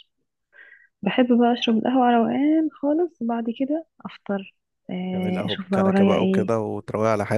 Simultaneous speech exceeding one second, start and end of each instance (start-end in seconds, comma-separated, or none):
5.1-6.5